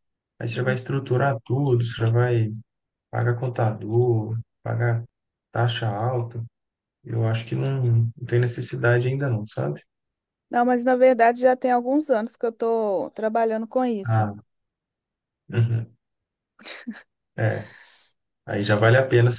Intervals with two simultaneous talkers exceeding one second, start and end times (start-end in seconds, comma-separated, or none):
none